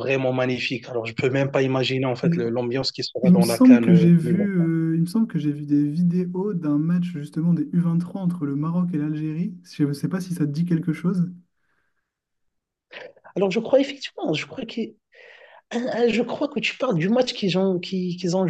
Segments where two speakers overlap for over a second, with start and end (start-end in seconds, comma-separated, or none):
3.2-4.5